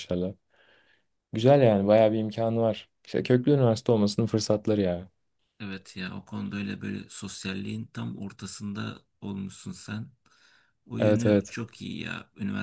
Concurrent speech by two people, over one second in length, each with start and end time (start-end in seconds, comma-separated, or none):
none